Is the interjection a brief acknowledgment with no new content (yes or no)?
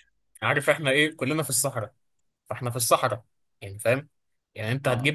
yes